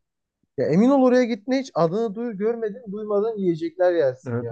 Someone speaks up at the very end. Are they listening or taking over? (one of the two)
taking over